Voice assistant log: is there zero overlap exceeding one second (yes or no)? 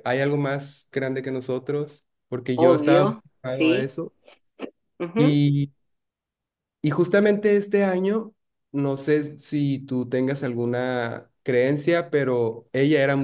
no